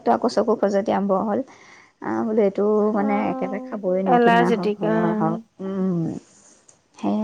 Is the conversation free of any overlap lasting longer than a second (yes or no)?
no